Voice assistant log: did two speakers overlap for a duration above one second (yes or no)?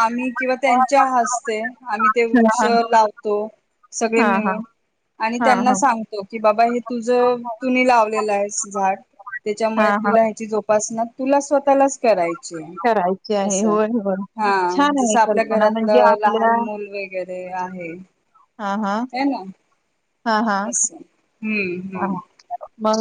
yes